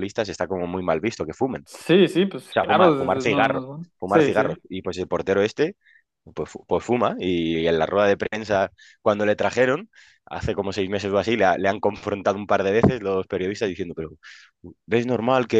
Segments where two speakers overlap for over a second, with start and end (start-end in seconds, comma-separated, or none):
2.5-4.6